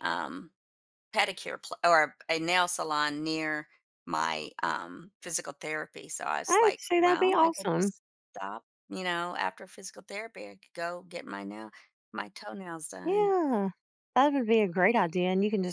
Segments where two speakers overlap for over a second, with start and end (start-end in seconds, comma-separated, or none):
6.5-7.9